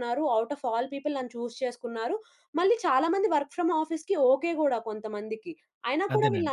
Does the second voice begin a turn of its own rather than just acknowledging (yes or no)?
no